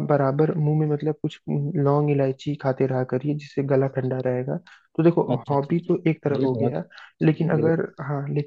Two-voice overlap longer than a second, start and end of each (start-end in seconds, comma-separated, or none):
5.3-6.8